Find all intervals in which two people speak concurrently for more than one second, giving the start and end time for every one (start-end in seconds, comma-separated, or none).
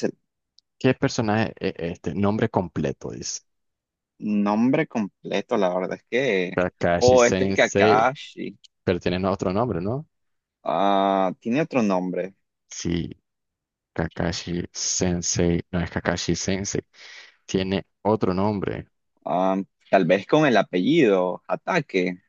6.5-8.1